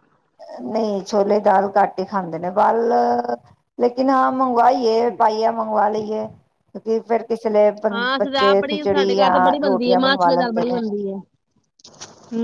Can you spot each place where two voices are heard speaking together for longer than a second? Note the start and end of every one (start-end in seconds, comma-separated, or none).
7.9-10.8